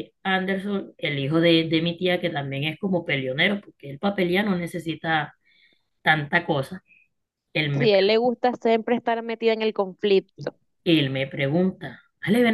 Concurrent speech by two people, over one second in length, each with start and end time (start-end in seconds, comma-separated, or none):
none